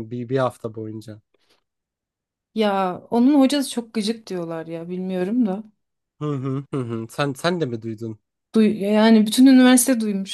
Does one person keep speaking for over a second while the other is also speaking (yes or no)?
no